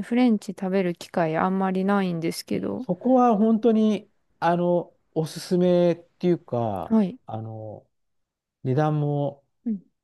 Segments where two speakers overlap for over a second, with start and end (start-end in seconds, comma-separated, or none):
none